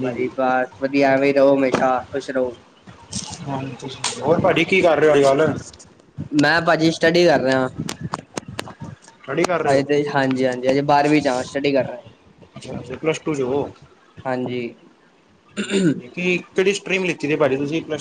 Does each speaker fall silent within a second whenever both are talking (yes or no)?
yes